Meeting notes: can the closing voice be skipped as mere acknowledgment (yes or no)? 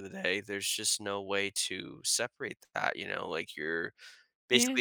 yes